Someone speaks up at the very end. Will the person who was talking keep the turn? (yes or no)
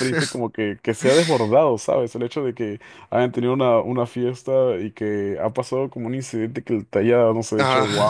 yes